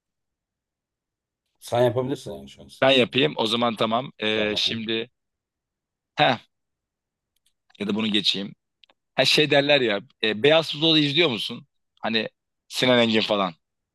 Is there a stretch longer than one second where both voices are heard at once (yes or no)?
no